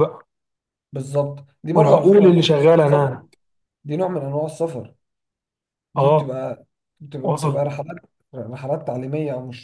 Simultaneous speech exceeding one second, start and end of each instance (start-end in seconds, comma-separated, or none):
1.7-3.2